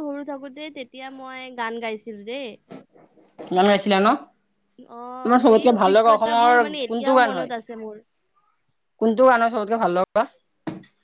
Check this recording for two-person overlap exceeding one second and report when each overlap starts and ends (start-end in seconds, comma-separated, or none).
5.5-7.5